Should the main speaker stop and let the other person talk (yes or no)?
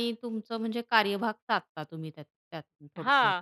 yes